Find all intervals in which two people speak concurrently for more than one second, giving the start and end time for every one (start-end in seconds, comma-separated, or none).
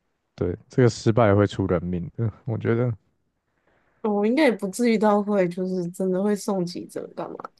none